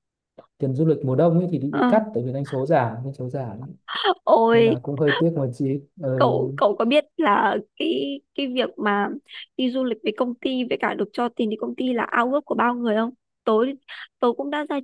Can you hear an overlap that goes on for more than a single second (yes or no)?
no